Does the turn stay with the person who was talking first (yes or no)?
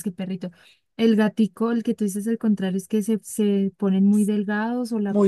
no